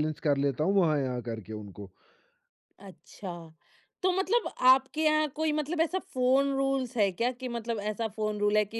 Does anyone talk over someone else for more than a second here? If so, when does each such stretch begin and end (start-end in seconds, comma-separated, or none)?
none